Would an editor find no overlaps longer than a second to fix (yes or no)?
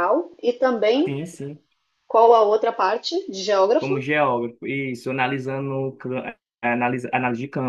yes